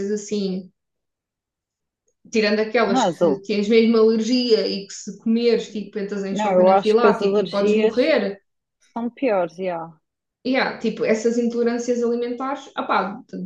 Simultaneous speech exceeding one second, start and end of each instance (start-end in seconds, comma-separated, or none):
6.3-8.0